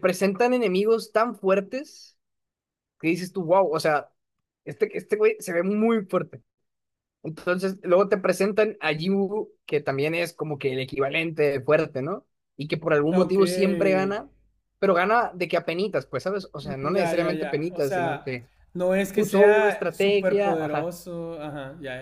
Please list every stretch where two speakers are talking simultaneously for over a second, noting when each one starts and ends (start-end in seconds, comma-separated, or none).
16.6-18.4, 19.1-20.9